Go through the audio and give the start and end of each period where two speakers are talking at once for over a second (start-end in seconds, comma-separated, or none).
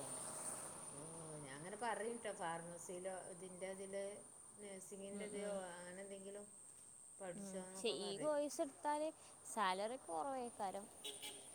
none